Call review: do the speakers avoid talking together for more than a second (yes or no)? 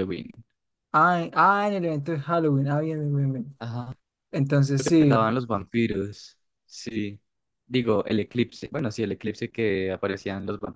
yes